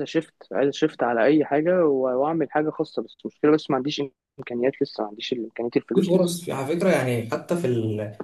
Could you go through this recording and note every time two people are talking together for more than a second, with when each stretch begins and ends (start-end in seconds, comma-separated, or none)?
none